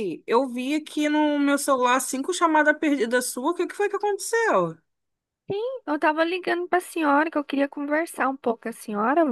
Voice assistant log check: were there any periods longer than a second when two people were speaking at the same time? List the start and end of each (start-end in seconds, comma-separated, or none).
none